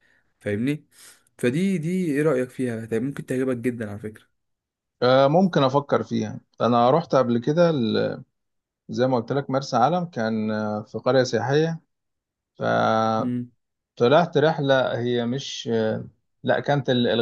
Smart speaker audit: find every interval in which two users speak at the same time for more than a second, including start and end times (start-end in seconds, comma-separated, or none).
none